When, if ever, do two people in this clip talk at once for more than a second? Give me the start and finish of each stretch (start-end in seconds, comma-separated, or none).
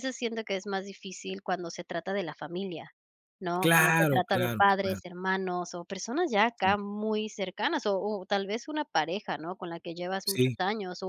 3.6-5.0